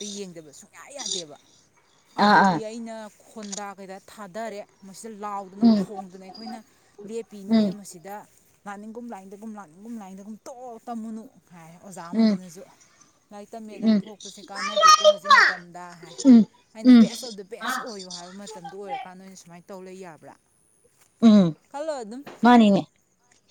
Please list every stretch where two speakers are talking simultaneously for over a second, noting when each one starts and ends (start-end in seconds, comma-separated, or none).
none